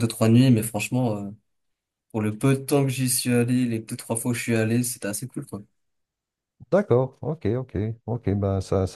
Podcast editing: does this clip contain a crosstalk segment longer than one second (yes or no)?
no